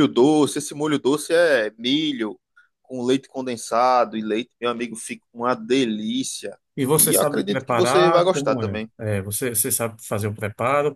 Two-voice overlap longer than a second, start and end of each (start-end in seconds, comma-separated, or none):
6.9-8.9